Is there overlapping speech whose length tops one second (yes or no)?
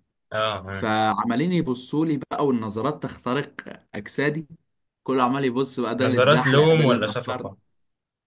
yes